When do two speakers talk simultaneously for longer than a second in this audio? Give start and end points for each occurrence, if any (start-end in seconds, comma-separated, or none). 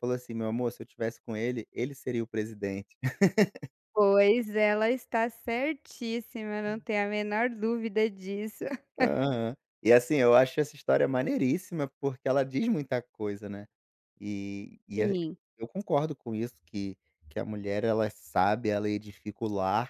none